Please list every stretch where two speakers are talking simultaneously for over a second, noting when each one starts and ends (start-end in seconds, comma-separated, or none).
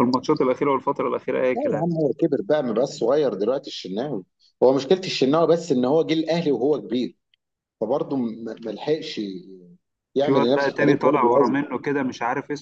10.2-11.6